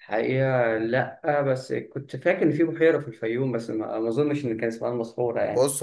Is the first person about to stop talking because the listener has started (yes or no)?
yes